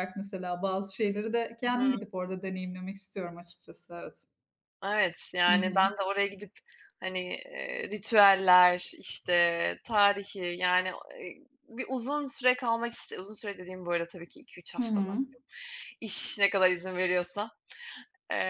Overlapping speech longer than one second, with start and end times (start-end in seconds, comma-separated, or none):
none